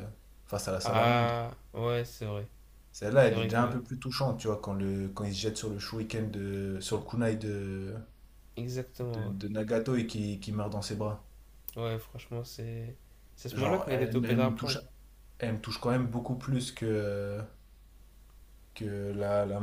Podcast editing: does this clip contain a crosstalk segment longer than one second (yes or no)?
yes